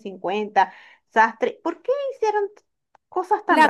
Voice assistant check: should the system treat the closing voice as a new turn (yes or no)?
yes